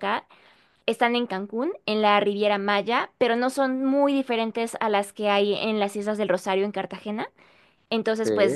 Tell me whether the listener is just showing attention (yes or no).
yes